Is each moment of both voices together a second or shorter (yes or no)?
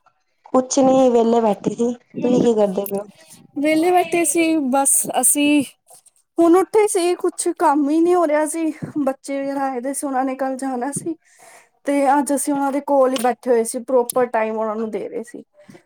yes